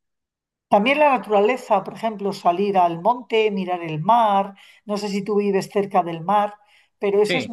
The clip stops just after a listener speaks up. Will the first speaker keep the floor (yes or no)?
yes